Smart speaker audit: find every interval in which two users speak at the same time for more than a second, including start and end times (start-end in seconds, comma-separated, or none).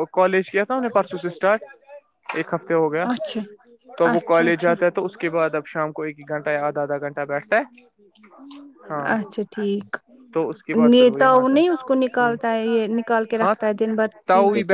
10.9-12.3